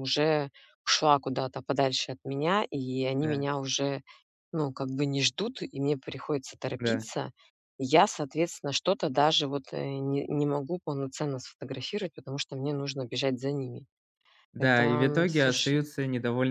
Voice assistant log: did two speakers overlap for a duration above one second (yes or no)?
yes